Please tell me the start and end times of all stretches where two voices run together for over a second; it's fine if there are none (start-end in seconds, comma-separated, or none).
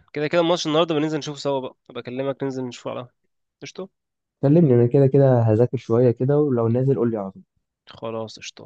none